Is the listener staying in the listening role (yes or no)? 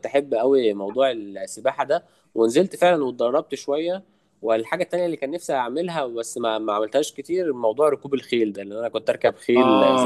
no